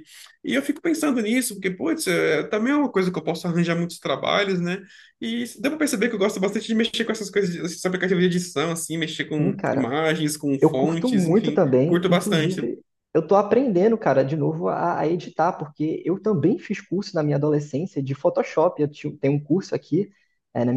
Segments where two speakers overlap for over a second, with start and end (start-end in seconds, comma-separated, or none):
10.6-12.6